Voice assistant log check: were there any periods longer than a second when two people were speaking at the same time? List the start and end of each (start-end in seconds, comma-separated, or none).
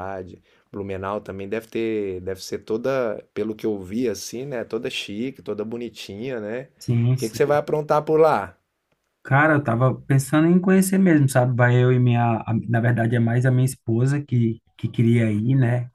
none